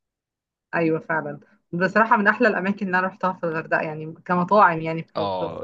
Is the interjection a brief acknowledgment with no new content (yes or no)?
no